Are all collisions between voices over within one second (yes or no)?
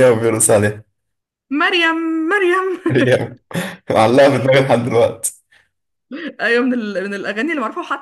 yes